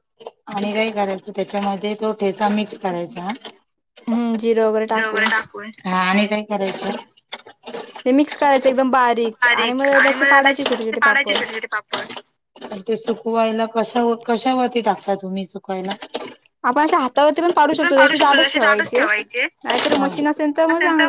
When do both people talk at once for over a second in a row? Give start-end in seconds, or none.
9.7-11.4